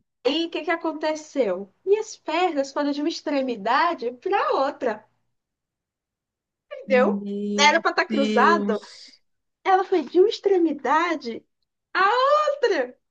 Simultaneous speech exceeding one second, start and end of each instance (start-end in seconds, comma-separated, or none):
6.9-8.8